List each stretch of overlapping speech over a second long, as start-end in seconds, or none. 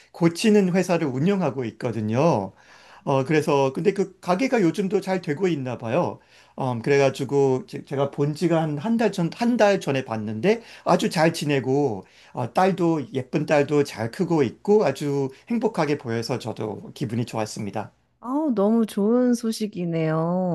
none